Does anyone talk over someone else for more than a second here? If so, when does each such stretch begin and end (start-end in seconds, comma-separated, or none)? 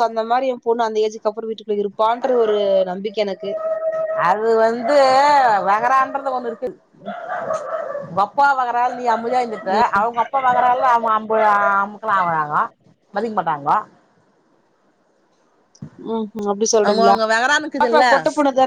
none